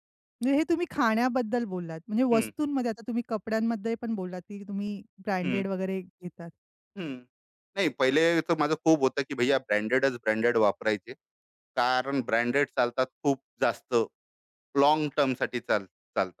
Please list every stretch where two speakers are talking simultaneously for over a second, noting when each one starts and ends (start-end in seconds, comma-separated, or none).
none